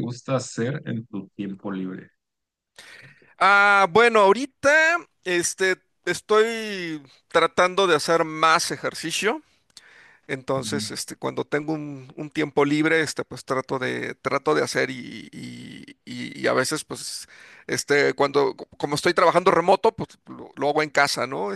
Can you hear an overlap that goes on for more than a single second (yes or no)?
no